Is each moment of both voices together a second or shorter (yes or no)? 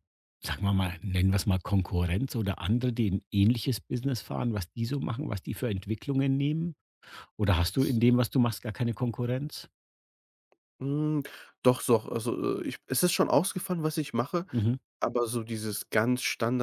yes